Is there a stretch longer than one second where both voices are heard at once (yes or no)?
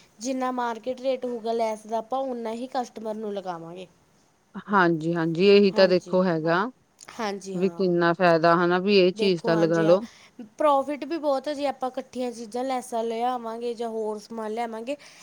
no